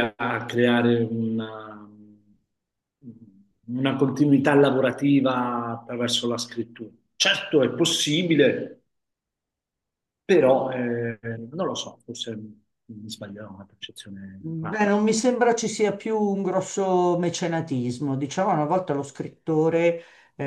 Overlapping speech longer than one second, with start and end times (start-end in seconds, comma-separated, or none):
none